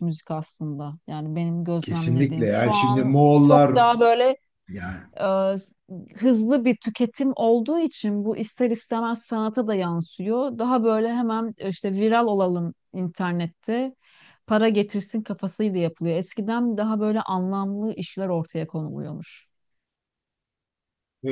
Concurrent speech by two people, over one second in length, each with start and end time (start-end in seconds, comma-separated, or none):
1.8-3.8